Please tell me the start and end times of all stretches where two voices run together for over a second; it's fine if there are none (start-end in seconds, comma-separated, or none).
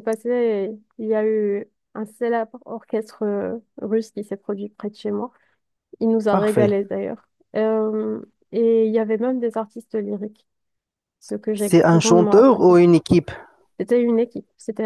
11.5-12.8